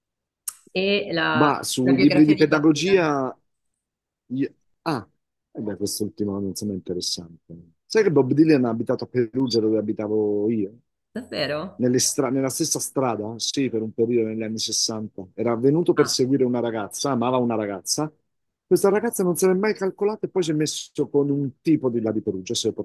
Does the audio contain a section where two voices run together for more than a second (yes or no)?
yes